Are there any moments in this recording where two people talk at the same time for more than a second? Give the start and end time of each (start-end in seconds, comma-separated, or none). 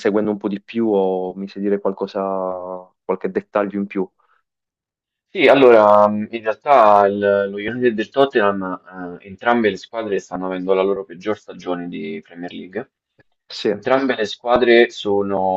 none